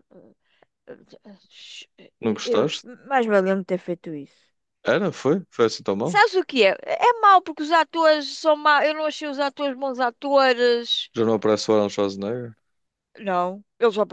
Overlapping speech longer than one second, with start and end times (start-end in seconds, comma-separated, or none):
none